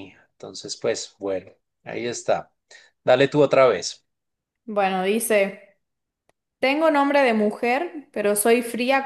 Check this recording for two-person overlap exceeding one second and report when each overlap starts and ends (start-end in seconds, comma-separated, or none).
none